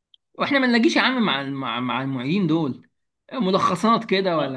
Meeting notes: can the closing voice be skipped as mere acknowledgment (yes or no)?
no